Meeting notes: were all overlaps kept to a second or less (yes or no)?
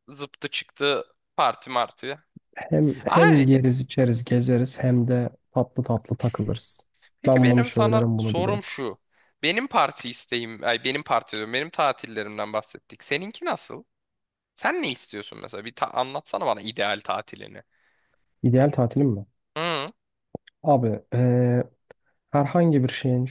no